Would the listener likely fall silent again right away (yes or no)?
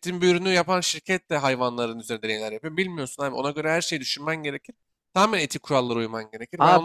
no